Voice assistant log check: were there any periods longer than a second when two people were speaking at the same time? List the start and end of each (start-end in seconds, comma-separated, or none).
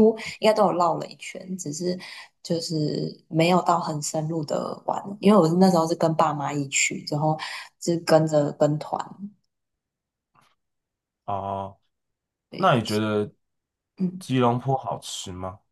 none